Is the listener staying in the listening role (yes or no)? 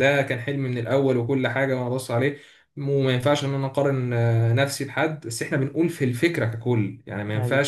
yes